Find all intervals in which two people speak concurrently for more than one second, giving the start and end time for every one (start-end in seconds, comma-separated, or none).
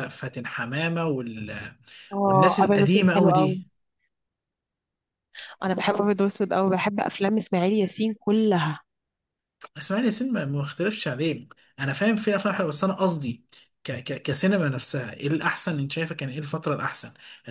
2.2-3.6